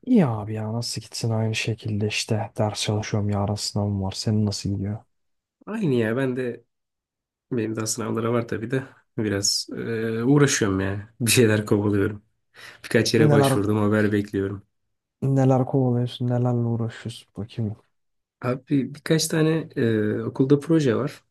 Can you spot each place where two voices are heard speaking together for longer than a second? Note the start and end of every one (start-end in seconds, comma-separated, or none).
none